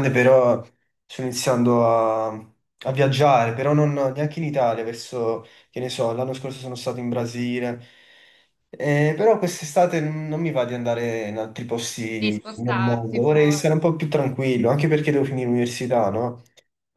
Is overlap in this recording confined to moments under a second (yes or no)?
no